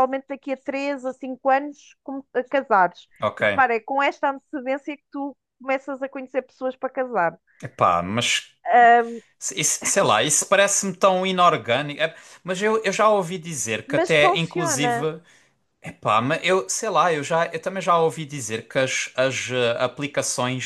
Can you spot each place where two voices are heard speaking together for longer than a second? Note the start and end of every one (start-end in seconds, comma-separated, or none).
13.9-15.1